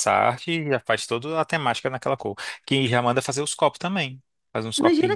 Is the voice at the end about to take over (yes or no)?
yes